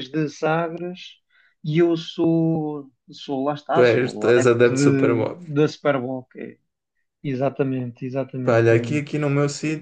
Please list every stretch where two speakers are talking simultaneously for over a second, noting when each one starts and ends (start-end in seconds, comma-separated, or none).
3.7-5.4